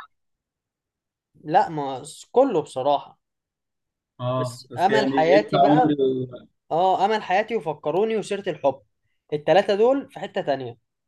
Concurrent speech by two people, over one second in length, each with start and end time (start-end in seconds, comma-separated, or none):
4.4-5.9